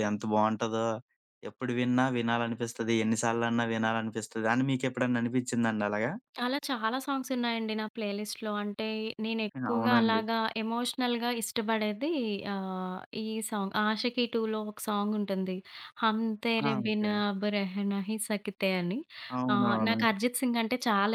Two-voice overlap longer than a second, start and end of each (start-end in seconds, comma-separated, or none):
none